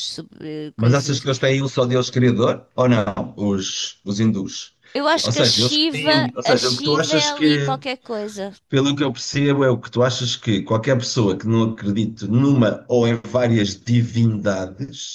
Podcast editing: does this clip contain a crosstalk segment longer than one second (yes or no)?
yes